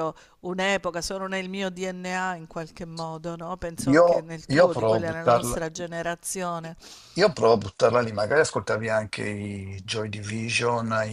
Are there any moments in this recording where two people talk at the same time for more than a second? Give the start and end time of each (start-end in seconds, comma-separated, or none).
3.9-5.7